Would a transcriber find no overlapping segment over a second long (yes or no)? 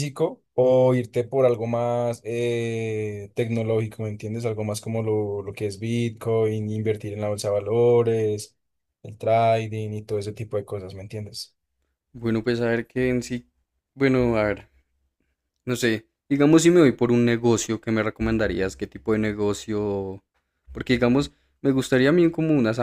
yes